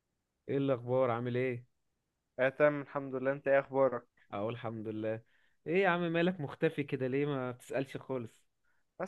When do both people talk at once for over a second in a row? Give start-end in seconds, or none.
none